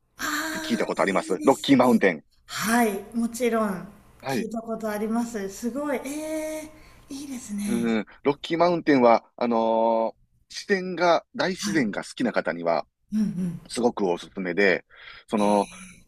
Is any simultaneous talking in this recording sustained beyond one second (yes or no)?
yes